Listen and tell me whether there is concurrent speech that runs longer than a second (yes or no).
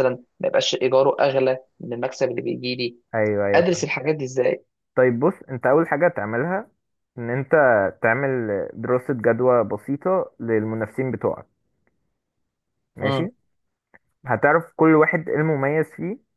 no